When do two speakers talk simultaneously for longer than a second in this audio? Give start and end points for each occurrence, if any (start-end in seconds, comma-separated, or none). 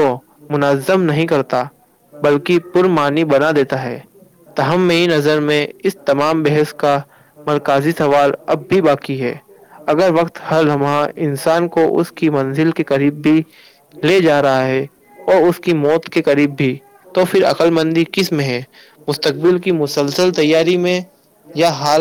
2.2-4.0